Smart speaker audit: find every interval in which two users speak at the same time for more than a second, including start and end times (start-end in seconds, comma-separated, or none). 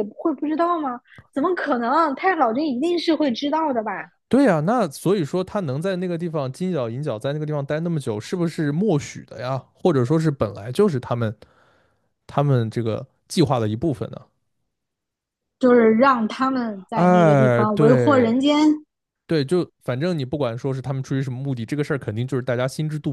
16.9-18.3